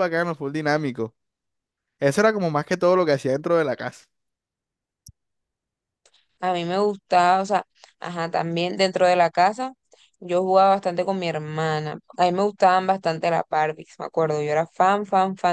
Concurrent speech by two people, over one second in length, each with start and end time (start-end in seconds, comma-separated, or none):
none